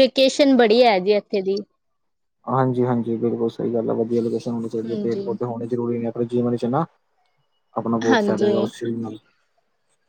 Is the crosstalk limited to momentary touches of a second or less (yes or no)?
yes